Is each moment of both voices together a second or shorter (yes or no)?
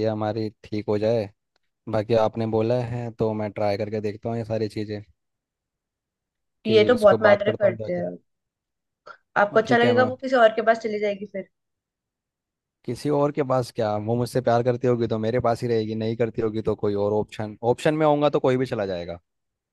no